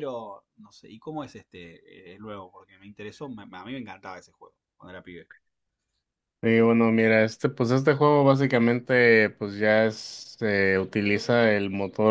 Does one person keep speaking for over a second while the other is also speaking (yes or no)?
no